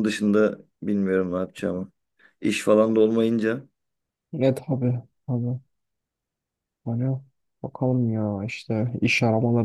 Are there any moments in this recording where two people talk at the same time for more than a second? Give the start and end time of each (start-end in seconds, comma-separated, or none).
none